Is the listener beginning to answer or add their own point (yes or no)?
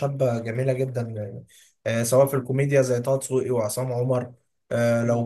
no